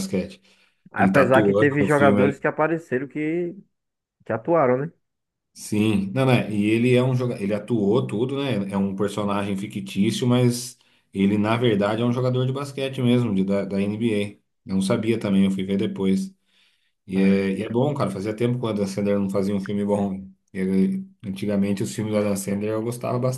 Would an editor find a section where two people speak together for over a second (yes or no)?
yes